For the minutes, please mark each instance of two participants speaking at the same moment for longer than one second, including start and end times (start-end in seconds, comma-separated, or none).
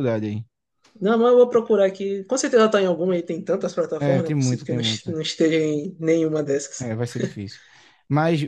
4.0-5.2